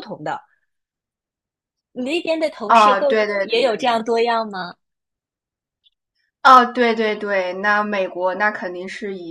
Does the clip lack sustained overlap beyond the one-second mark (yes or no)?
no